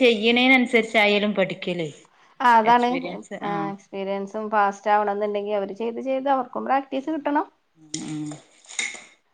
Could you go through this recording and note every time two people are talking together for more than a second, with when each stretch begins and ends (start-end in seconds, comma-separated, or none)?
none